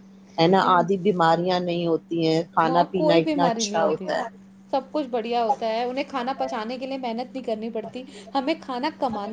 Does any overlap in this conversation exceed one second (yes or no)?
yes